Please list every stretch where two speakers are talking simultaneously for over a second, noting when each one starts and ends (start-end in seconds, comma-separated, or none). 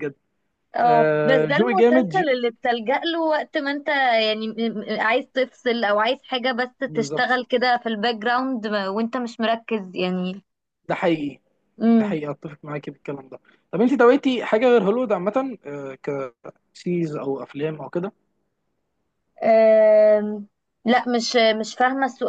0.8-2.2